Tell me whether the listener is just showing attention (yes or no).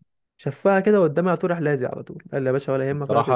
no